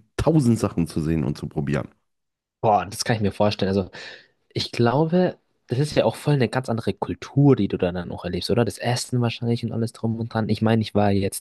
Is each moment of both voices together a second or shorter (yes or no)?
yes